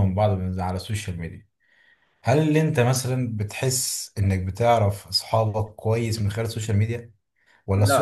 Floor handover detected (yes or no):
no